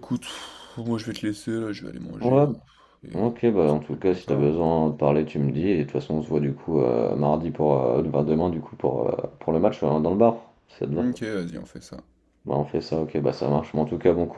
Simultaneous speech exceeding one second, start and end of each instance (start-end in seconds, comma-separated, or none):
3.1-4.5